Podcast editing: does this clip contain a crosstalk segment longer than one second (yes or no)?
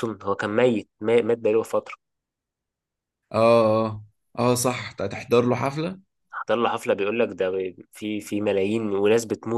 no